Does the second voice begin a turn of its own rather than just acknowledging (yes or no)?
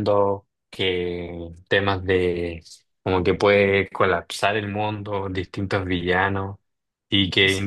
no